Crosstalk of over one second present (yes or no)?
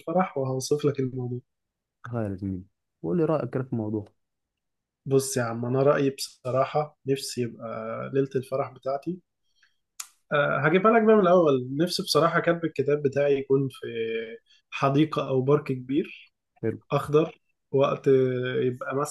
no